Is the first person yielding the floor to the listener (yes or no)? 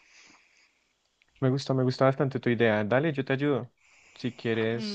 yes